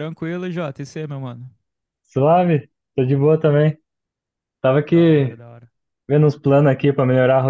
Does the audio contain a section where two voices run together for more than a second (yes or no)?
no